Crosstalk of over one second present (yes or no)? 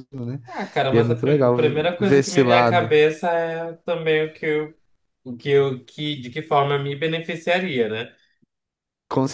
yes